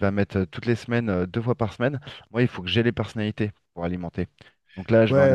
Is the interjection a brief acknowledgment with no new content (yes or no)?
yes